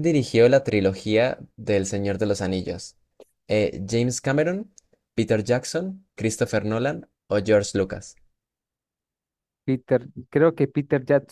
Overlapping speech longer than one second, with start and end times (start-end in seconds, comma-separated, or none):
none